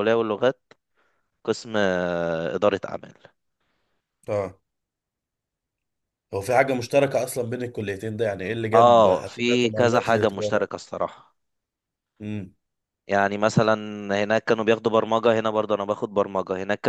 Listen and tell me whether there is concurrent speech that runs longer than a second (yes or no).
yes